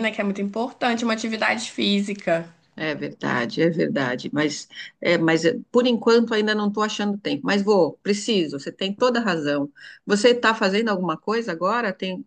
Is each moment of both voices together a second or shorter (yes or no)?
yes